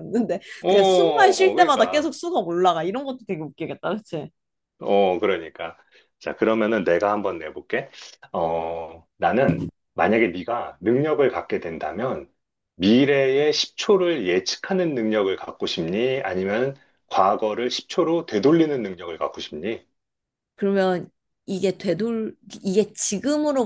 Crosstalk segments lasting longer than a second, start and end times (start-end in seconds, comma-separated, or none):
0.6-2.1